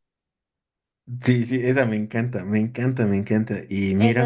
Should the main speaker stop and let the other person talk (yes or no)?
yes